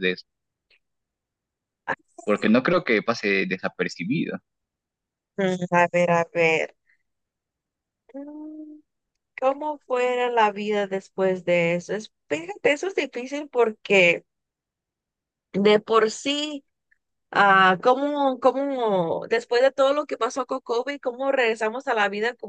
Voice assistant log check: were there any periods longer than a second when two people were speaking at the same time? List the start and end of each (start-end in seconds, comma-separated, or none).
none